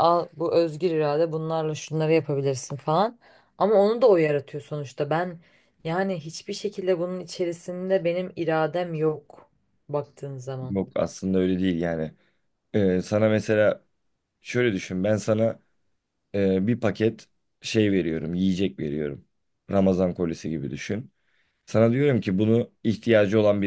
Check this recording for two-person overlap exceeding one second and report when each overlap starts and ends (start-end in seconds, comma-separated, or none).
none